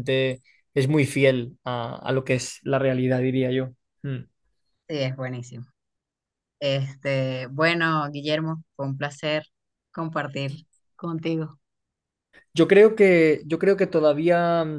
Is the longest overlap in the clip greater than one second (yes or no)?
no